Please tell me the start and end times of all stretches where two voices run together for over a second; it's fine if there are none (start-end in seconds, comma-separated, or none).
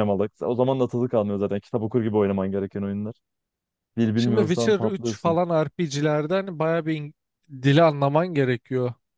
4.2-5.4